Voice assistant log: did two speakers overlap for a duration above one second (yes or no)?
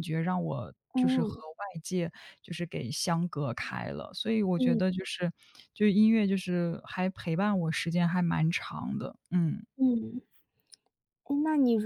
no